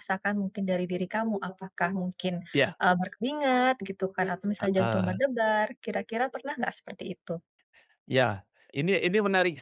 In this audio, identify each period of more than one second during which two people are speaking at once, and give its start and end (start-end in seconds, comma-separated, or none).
none